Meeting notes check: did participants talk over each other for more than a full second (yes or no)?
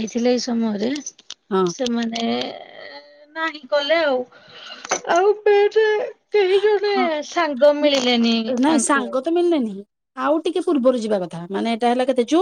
no